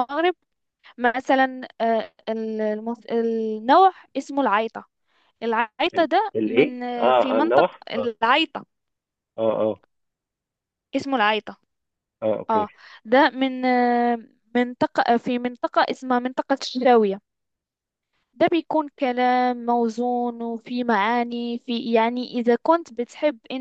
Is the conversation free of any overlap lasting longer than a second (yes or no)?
no